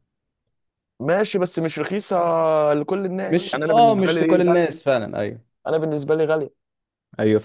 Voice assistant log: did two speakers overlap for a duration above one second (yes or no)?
yes